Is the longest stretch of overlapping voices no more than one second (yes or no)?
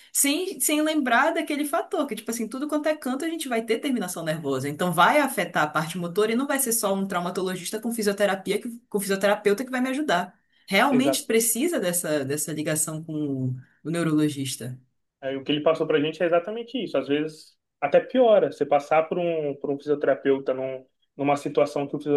yes